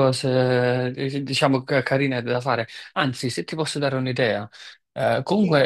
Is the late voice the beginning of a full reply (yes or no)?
no